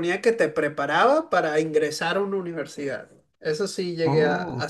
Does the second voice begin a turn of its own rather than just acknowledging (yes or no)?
no